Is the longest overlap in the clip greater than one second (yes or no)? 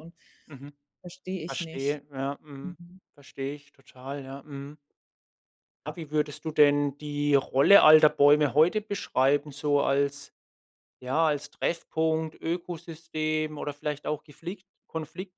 no